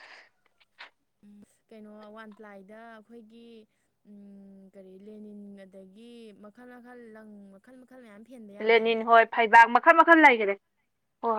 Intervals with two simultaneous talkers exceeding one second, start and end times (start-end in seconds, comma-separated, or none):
none